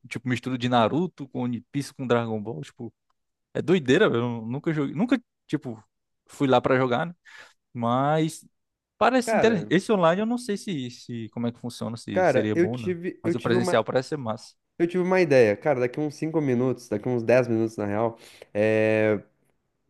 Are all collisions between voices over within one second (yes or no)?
no